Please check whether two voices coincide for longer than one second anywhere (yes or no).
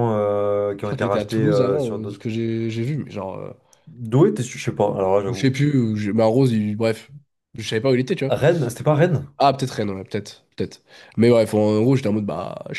yes